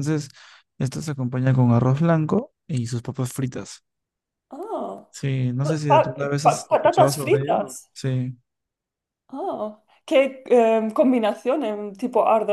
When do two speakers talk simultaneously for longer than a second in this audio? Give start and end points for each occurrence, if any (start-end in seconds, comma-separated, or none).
5.6-7.7